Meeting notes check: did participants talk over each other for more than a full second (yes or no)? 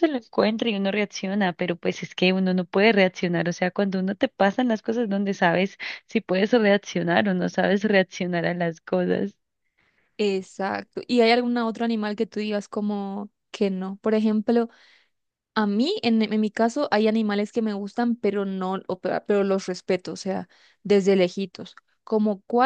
no